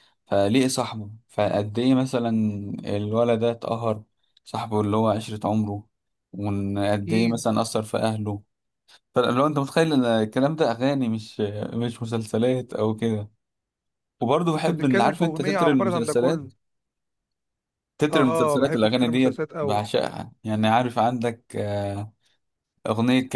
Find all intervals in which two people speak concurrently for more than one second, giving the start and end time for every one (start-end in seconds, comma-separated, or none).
14.6-16.5, 18.1-19.8